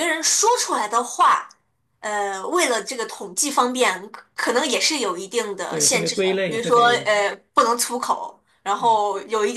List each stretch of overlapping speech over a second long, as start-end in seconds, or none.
5.7-7.1